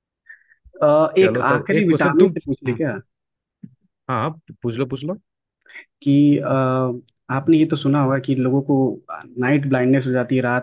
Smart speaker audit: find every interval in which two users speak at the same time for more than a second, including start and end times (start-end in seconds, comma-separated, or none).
1.2-2.8